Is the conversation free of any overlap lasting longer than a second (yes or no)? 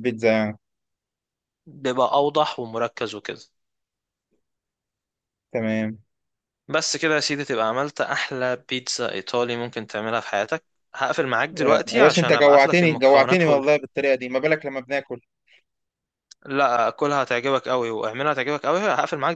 no